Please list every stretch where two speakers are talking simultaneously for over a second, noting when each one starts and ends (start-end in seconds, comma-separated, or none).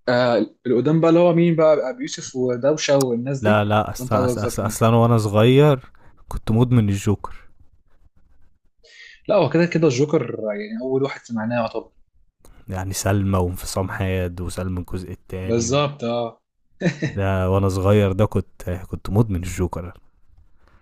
3.4-4.8